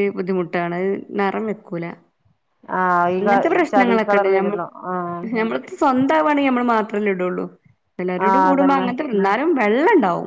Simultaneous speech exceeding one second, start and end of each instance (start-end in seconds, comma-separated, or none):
3.2-4.7